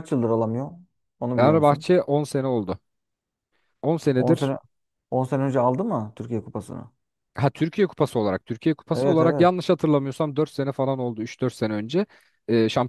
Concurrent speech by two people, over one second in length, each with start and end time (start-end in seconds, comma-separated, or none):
none